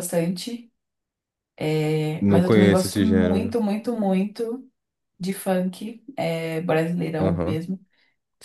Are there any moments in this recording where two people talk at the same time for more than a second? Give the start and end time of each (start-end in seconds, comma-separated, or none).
2.2-3.6